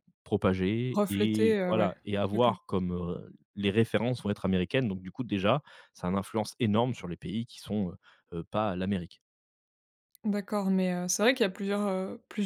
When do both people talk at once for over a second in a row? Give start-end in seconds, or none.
0.9-2.5